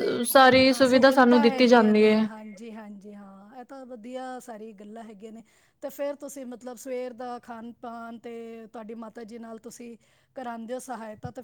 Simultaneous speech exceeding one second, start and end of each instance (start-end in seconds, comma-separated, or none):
0.7-2.3